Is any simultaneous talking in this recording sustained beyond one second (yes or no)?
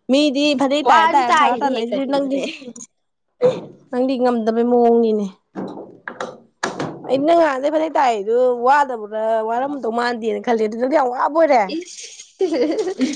yes